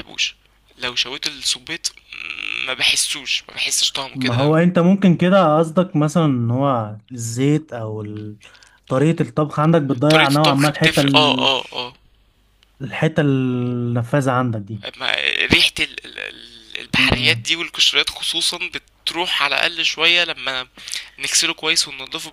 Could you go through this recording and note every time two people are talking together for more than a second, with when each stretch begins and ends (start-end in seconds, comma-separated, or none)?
10.1-11.5